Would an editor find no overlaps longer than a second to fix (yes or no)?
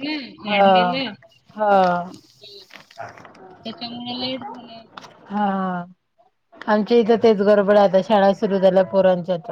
yes